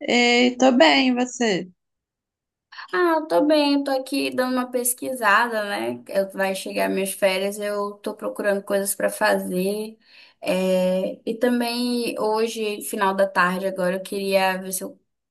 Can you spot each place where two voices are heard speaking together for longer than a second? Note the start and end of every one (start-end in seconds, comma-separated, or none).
none